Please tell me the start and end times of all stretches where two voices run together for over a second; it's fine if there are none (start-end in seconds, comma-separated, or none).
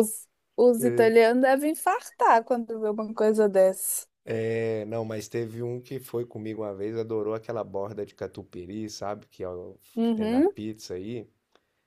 none